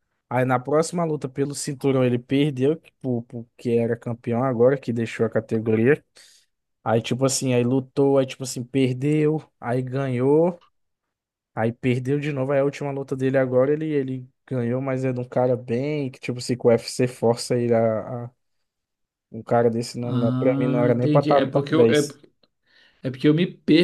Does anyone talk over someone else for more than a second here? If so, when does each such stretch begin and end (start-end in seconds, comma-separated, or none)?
20.0-22.1